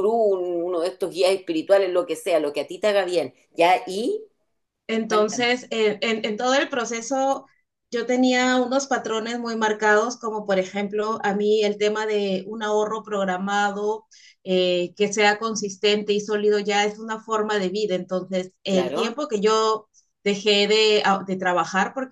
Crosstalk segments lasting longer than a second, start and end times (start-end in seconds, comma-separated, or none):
none